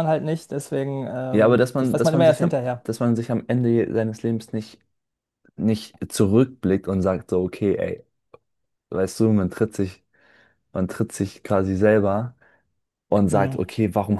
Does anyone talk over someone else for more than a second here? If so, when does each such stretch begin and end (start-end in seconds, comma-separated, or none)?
1.3-2.9